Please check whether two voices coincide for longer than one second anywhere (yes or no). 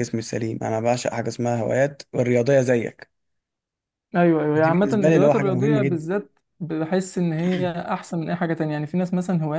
yes